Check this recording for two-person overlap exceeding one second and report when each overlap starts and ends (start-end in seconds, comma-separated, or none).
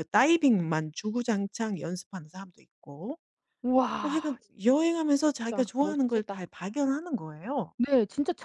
5.1-6.4